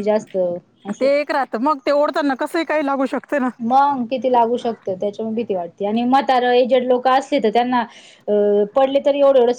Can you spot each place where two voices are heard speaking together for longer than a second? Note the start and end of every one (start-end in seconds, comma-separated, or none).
none